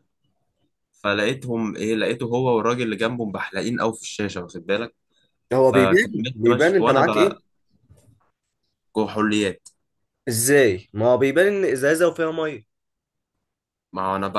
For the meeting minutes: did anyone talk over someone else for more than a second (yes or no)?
yes